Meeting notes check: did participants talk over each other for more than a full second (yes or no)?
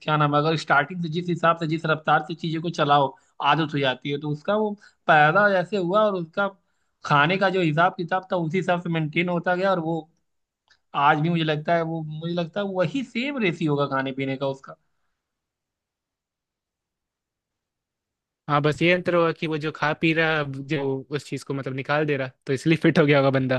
no